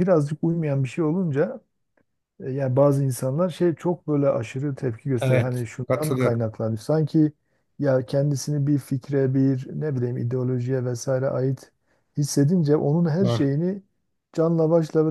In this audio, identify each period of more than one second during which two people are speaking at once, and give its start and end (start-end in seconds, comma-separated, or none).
5.2-6.5